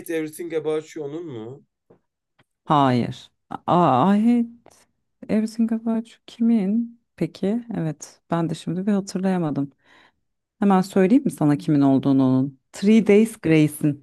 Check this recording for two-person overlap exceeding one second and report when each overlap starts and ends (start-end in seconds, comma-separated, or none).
none